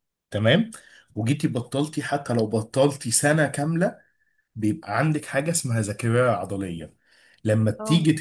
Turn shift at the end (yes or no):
no